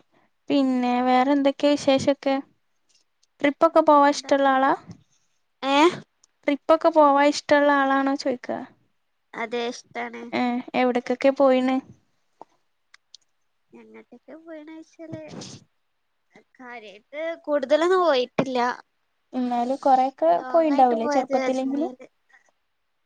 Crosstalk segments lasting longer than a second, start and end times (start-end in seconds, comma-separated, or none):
20.4-21.9